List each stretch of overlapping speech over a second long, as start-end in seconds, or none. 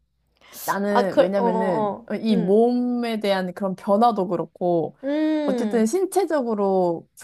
0.9-2.6